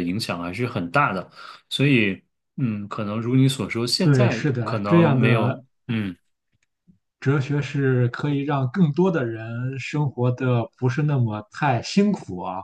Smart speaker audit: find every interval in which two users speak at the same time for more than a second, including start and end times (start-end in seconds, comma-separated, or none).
4.0-5.6